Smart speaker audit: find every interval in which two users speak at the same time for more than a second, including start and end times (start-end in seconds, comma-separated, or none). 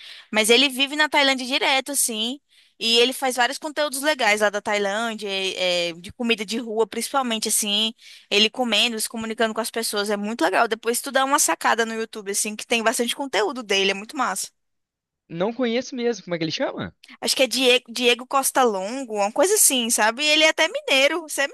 none